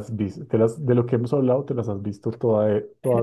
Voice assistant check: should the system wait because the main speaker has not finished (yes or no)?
no